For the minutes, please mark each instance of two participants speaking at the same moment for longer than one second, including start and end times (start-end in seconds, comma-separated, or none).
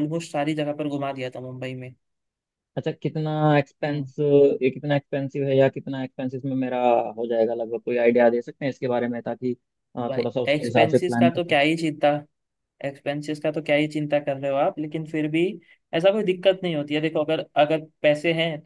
10.1-11.6